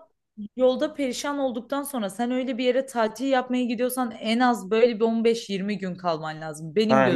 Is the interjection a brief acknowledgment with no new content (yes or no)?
no